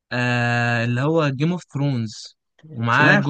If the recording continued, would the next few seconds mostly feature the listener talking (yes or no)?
no